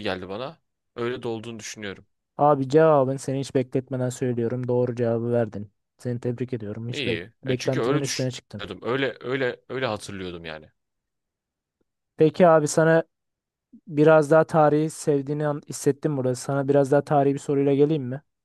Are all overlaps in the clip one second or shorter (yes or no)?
no